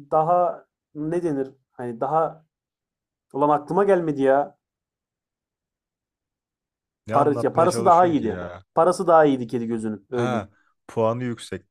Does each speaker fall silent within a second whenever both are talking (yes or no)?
no